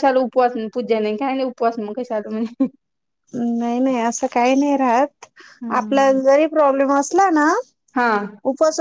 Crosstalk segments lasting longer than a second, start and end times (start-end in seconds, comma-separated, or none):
none